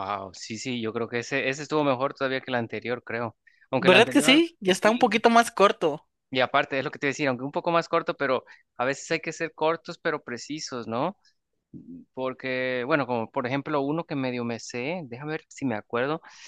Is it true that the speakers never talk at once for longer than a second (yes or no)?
no